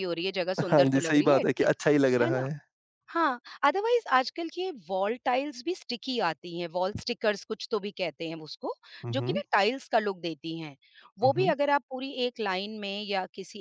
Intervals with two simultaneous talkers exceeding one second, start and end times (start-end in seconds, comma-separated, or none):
0.7-2.5